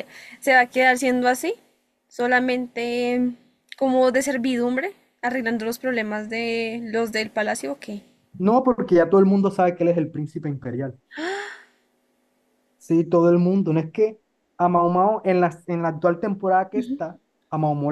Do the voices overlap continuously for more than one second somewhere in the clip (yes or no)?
no